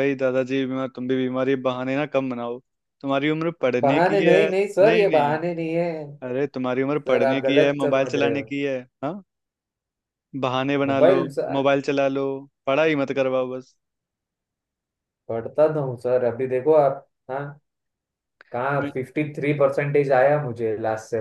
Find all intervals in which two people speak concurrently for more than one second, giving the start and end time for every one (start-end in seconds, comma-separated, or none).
3.8-5.4, 7.1-8.4